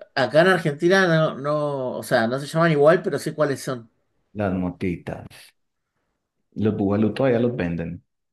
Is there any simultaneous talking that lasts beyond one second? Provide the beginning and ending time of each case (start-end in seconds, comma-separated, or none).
none